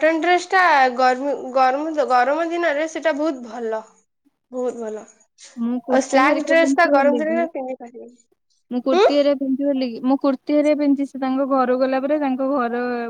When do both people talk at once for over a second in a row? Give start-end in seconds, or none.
5.7-7.4